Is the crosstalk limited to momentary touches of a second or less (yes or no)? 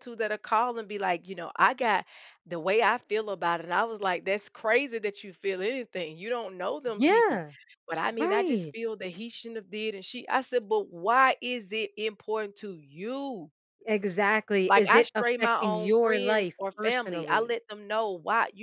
no